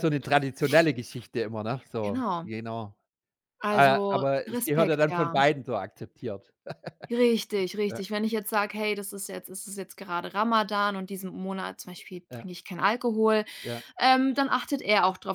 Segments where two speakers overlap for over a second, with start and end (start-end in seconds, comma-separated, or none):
3.7-5.4